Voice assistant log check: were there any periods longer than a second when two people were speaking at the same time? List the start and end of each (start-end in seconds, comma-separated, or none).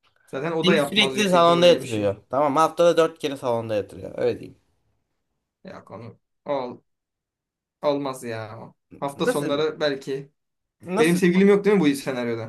0.6-2.1